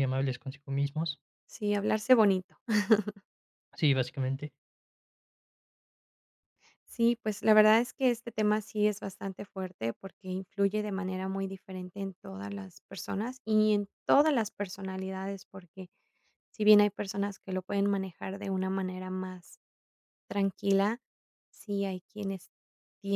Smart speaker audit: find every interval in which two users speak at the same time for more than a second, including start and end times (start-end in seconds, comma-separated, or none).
none